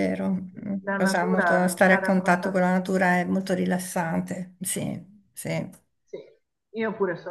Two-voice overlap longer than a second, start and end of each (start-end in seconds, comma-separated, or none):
0.8-2.7